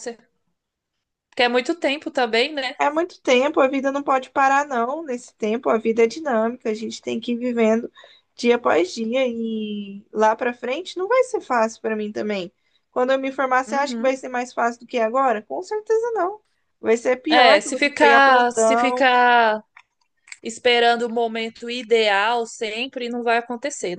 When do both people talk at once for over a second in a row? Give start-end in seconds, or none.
17.3-19.1